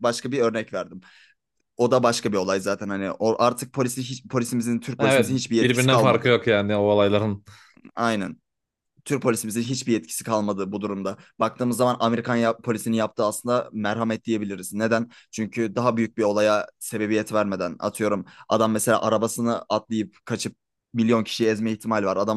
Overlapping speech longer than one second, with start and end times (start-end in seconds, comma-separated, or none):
5.0-6.3